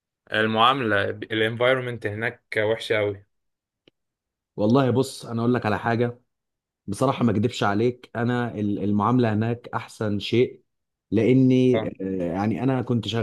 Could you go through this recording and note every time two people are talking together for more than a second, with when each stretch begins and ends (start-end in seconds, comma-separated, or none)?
none